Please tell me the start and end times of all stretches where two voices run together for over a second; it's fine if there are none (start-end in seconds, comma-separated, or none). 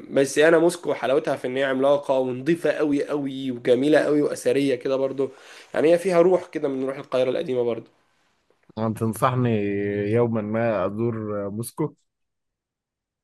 none